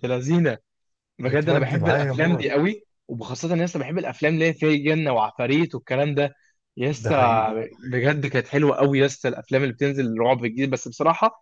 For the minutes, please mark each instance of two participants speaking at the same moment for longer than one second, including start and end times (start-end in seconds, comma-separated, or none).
1.2-2.5